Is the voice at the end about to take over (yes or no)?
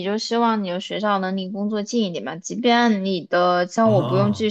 no